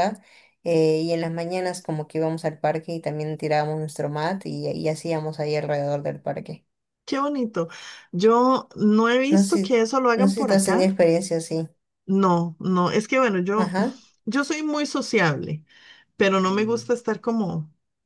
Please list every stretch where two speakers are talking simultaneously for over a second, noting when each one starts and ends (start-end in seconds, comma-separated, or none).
9.3-11.0